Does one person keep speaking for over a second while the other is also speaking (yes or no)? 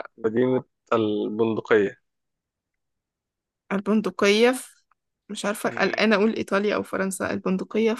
no